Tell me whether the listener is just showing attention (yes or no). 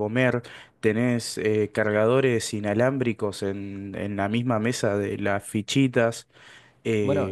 no